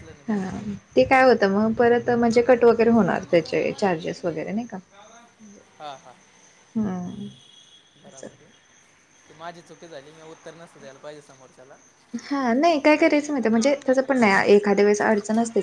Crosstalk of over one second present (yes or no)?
yes